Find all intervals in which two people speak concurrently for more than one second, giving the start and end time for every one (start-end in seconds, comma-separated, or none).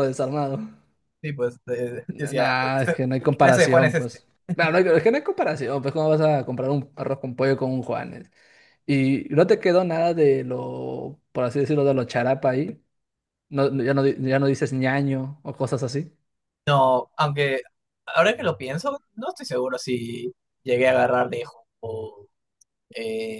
2.1-4.2